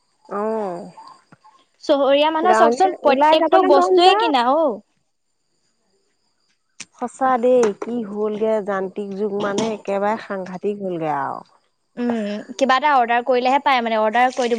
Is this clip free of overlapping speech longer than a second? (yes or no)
no